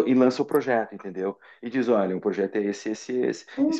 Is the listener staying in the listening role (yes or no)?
no